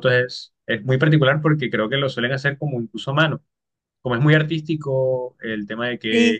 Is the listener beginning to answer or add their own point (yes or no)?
no